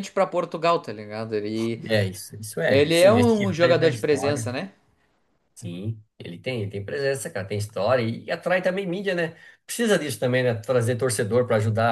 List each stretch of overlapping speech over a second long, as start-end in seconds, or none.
2.6-4.5